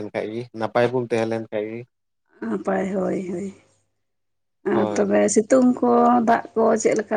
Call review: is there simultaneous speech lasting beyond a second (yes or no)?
no